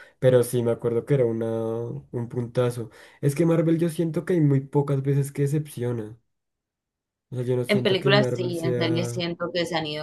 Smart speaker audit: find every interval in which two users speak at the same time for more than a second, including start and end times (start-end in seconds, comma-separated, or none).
7.7-9.3